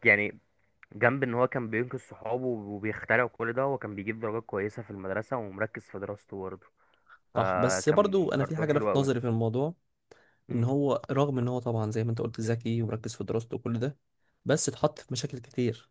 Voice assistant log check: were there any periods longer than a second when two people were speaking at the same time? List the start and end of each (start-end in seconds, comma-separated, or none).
7.3-9.1